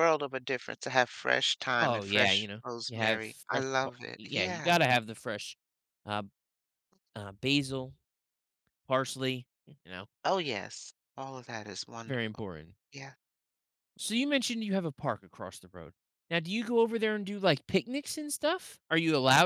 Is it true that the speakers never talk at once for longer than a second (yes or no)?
no